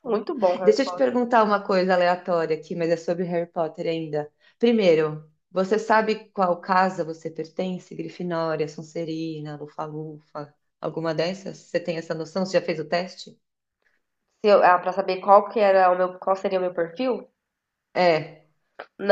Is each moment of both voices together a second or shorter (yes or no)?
yes